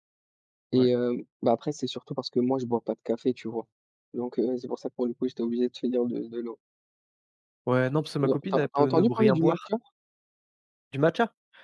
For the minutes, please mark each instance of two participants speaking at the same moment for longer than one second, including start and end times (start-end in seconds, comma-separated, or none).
8.2-9.6